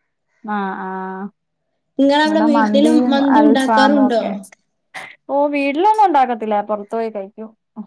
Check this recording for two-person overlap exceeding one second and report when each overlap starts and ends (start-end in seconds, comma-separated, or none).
2.3-4.2